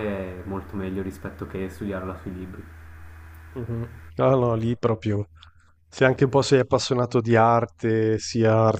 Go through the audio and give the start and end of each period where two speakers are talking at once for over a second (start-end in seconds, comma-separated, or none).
none